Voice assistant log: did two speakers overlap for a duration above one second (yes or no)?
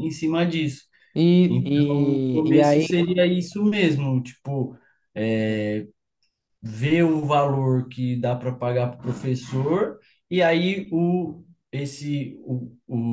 yes